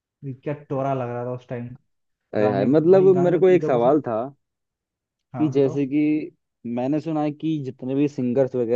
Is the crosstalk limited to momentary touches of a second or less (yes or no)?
no